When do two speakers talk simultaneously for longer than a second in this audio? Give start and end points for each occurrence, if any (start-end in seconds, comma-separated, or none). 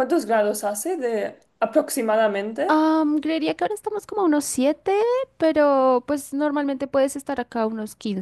none